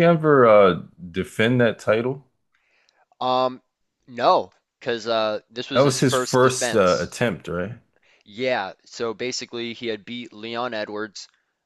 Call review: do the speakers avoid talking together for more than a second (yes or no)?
no